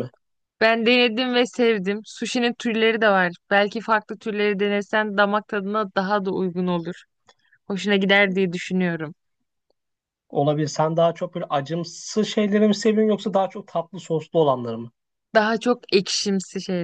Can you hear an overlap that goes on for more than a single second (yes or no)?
no